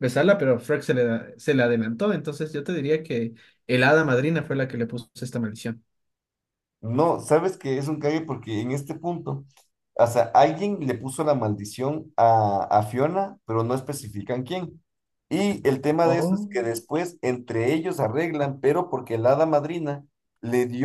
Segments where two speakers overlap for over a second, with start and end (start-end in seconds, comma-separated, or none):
none